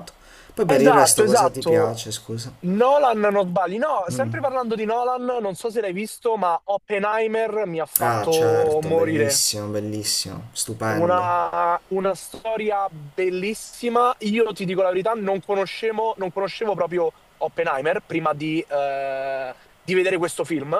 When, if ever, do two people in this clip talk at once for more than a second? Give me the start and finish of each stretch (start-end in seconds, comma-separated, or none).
0.7-2.0, 8.0-9.4